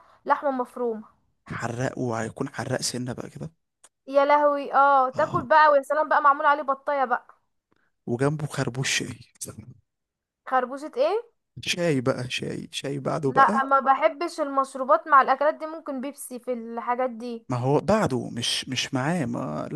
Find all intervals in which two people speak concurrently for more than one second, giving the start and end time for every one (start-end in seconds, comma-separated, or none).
none